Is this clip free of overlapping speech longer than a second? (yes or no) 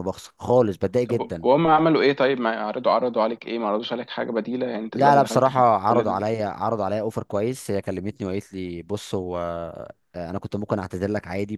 no